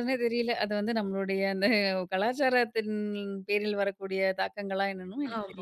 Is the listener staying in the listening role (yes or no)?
no